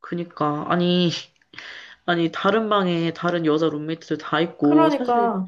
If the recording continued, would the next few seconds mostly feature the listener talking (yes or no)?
no